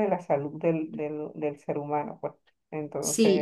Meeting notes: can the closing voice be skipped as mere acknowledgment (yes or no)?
no